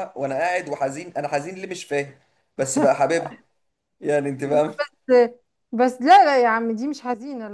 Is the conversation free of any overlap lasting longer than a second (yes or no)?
yes